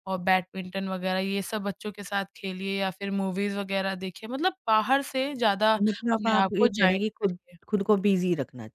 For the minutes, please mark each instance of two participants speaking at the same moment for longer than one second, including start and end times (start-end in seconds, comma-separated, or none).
5.8-7.6